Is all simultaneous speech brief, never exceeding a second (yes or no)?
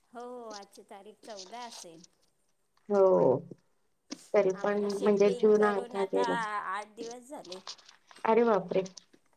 no